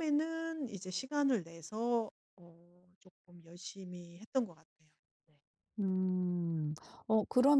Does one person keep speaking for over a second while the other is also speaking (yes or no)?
no